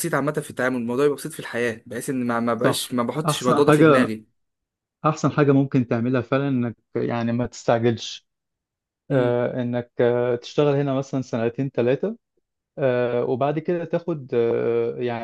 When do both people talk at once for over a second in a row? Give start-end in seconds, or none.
2.6-4.1